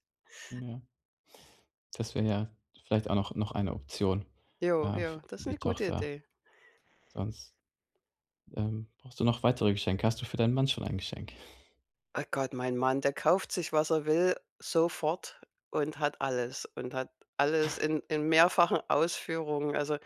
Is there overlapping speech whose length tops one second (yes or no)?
yes